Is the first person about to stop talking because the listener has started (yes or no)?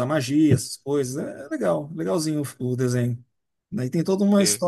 no